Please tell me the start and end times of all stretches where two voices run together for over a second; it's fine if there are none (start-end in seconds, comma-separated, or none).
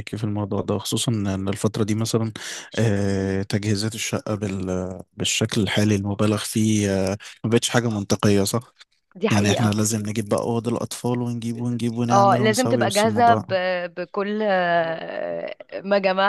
12.1-13.4